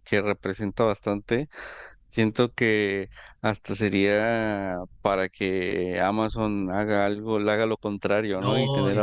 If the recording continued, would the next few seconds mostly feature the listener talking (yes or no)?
no